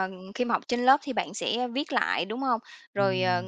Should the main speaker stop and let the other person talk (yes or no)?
no